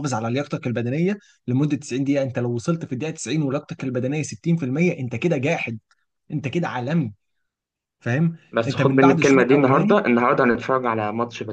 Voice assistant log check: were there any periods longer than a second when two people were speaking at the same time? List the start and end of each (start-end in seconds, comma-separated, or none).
8.5-9.9